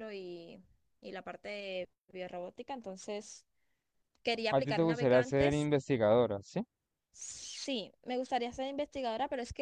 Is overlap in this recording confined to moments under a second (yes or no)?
no